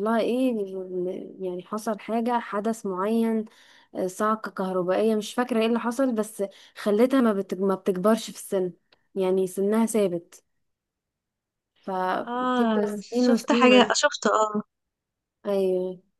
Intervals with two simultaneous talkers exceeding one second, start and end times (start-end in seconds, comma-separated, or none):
12.6-13.9